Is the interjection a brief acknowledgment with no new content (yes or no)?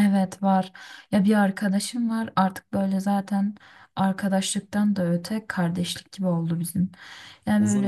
no